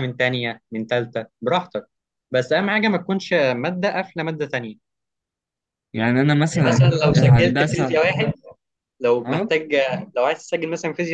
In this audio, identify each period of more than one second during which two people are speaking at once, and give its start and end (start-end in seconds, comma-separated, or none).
6.5-8.0